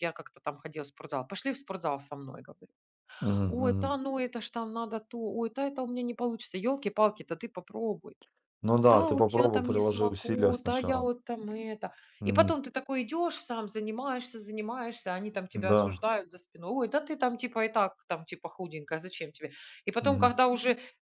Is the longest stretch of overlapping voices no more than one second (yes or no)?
no